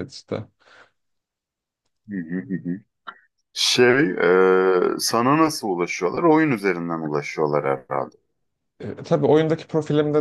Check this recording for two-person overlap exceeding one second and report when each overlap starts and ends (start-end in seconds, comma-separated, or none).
none